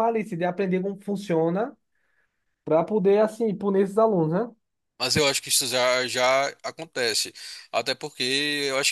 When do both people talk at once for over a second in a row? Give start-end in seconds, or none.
none